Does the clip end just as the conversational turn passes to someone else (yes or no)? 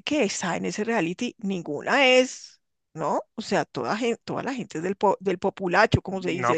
yes